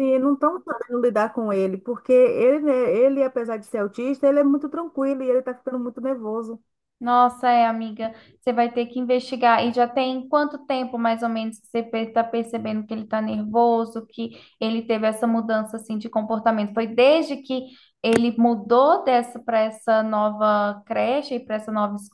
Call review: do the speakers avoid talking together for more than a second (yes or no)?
yes